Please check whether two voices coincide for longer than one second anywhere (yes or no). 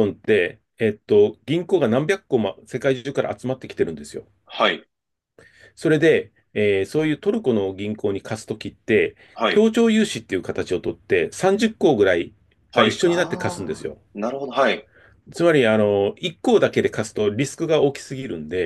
yes